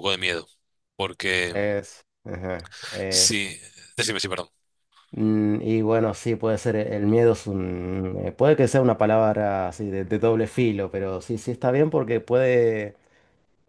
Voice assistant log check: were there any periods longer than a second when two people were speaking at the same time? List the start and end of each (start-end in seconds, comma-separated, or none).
none